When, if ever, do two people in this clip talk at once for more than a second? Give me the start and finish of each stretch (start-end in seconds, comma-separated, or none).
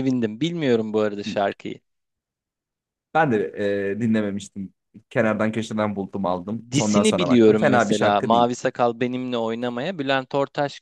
6.7-8.5